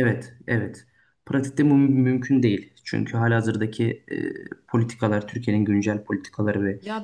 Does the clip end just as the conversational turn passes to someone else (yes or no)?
yes